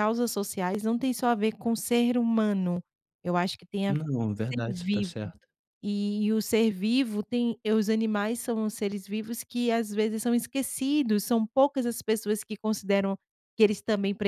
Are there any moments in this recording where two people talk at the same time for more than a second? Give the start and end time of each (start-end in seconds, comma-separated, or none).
3.9-5.3